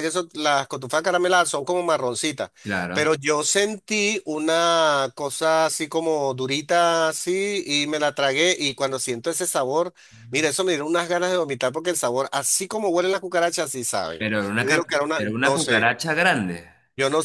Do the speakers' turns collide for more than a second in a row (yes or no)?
yes